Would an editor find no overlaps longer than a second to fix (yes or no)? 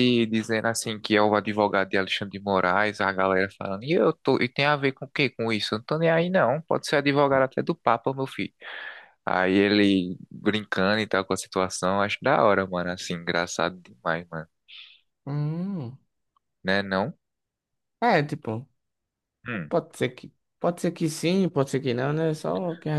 yes